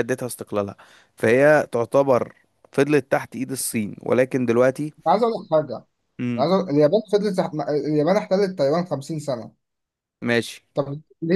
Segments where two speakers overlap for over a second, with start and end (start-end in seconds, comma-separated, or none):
none